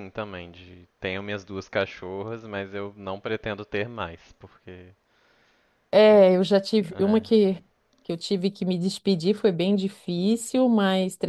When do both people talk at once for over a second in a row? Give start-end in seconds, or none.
none